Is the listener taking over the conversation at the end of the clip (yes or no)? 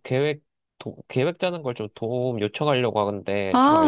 yes